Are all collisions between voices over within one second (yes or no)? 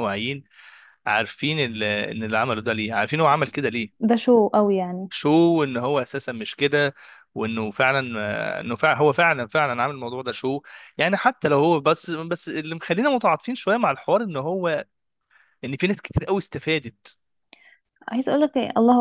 yes